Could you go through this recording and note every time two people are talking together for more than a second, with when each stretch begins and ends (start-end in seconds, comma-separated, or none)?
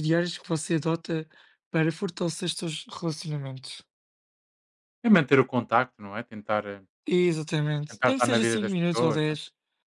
7.9-9.4